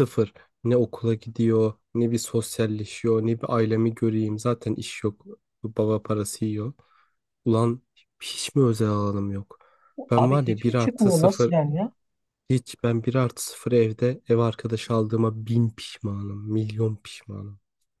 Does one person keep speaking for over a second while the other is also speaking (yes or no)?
yes